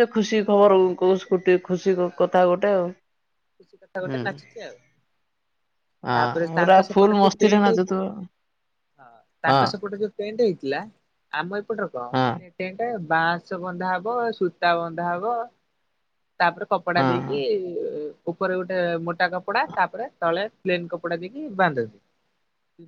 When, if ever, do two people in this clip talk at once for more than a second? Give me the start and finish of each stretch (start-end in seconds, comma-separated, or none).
6.2-8.0